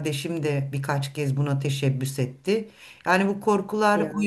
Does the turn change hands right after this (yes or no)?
no